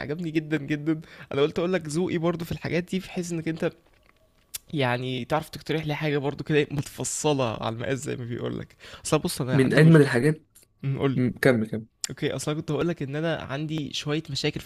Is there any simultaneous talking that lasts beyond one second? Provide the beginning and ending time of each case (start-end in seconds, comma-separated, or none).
none